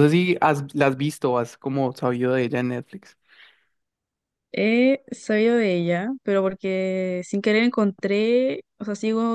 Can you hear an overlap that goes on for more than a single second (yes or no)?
no